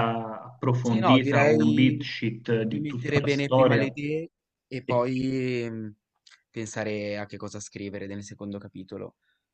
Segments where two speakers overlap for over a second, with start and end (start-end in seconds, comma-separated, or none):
0.8-2.0, 2.7-4.0